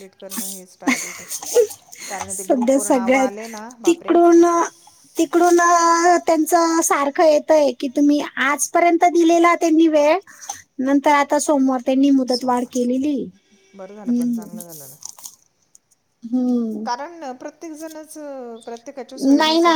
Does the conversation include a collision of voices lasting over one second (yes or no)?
yes